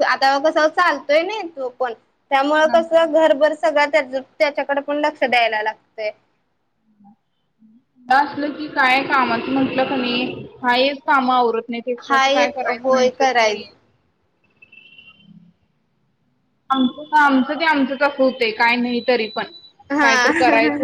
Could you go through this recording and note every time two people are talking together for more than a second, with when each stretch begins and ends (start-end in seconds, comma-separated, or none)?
12.1-13.6